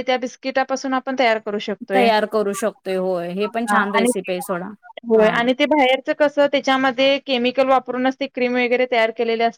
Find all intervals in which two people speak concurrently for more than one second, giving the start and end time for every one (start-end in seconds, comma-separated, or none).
none